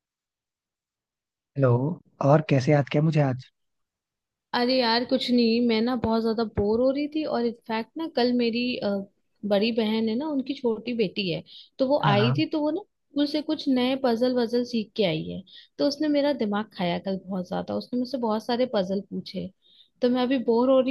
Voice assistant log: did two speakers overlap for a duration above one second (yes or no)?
no